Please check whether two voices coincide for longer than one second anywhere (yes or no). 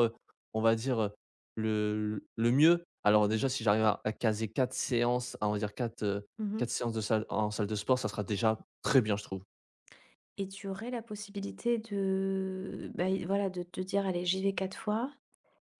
no